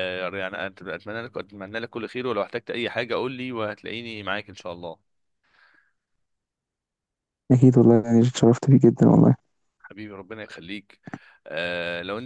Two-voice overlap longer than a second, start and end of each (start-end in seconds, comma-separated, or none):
none